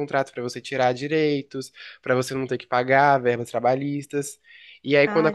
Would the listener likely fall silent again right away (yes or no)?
yes